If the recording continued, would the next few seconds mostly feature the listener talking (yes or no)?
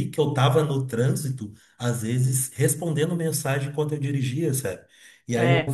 no